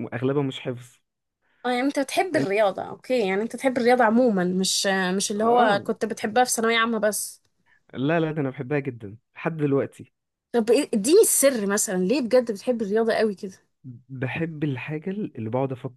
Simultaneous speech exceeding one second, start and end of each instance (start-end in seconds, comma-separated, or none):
none